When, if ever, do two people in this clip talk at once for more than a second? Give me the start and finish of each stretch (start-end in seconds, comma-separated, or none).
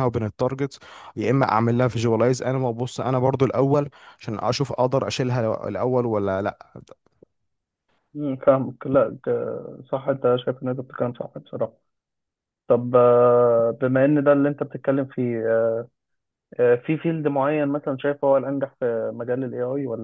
none